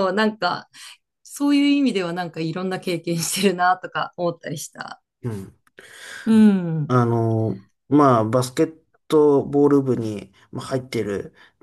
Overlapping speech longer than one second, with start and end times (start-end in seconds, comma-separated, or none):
none